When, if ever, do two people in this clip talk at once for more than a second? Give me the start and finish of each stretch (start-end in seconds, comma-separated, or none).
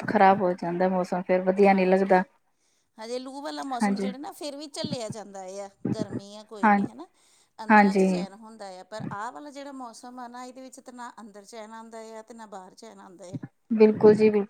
none